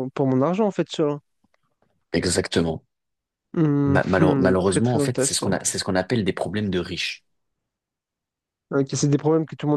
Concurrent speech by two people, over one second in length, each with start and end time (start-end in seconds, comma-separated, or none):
3.9-5.6